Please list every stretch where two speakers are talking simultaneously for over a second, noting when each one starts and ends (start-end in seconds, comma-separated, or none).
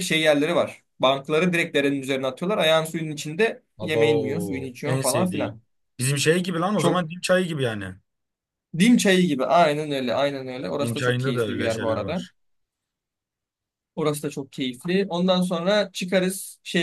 3.8-5.6, 10.8-12.2